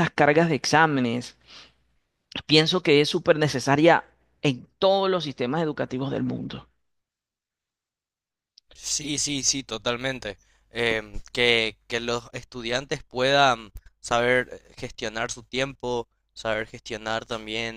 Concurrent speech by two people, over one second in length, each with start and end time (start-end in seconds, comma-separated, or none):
none